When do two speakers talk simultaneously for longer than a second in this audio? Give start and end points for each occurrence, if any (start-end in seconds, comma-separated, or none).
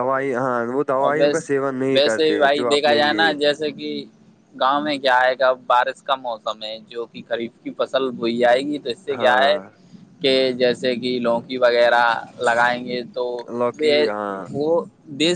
1.1-3.3